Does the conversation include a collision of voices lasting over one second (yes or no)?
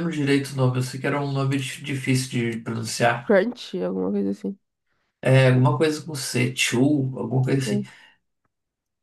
no